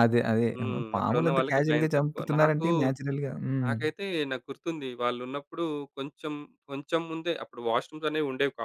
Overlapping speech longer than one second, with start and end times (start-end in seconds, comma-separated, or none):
0.9-2.7